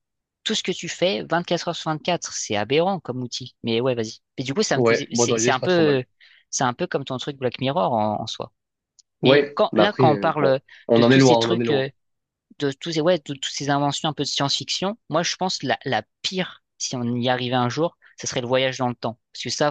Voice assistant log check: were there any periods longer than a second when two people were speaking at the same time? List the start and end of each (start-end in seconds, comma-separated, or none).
4.7-6.0, 9.2-11.9